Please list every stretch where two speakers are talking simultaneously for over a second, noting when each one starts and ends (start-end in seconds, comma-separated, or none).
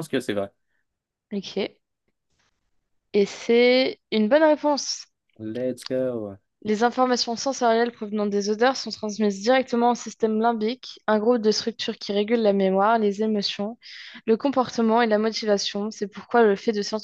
none